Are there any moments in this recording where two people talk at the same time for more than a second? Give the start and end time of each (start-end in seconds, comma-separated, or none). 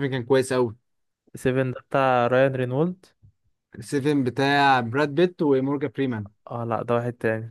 none